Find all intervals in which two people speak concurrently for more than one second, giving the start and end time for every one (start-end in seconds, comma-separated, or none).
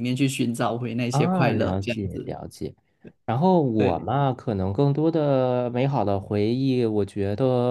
1.1-2.3